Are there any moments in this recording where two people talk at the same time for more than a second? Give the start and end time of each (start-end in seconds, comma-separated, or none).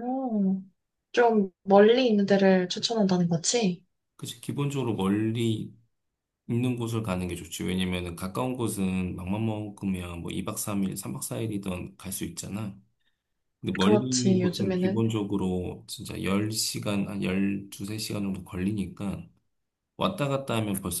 13.8-15.0